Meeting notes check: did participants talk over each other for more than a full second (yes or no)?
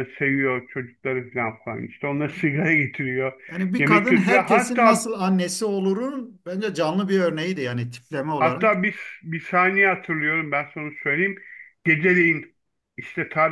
yes